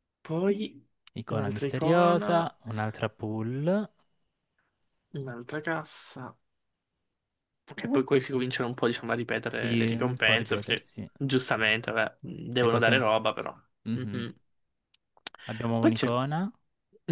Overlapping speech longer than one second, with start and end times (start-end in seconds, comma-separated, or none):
1.3-2.5, 9.5-11.1